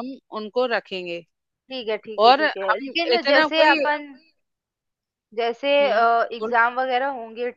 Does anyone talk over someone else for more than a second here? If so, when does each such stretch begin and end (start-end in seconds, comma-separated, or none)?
2.2-3.8